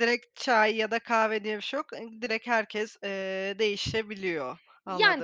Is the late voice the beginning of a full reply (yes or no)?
yes